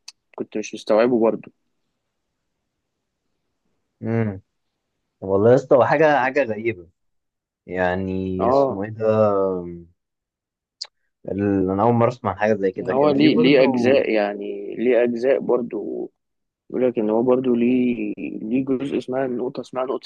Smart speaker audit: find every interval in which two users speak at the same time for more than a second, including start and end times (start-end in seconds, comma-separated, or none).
12.8-14.1